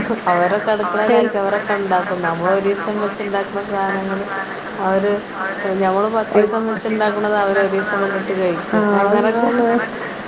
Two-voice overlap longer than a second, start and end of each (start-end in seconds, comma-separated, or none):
0.9-4.2, 6.4-9.5